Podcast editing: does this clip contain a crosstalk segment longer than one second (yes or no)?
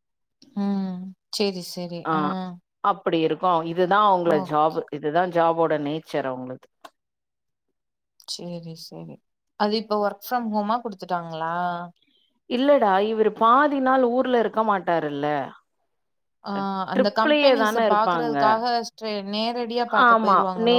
yes